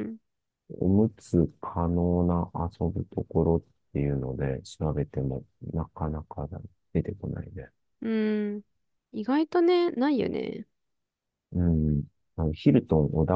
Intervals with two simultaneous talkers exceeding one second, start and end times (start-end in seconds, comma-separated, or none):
none